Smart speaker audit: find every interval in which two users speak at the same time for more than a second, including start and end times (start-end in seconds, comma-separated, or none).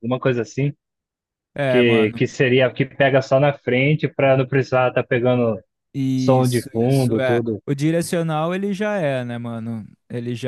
6.1-7.6